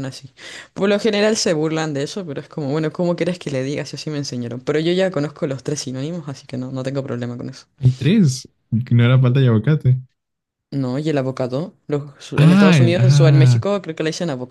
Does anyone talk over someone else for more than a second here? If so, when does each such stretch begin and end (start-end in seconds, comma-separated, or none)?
12.3-13.6